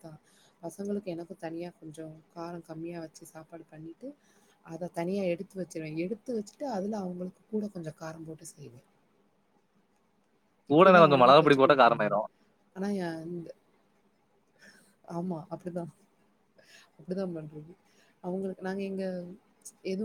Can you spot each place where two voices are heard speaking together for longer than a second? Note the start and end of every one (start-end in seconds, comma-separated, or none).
10.7-12.2